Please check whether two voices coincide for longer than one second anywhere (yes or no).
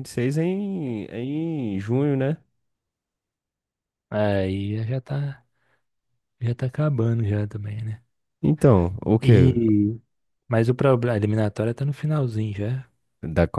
no